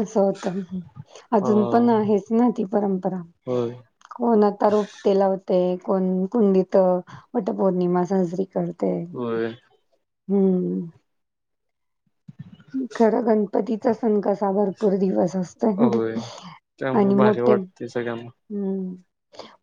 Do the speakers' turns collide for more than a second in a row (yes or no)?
yes